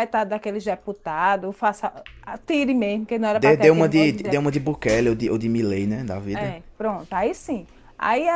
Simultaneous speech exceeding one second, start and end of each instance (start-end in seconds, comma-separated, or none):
3.3-4.5